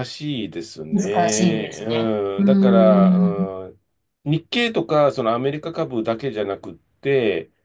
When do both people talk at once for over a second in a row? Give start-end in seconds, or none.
0.9-3.5